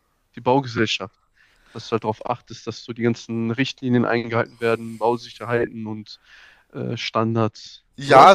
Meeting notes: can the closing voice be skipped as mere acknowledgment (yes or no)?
no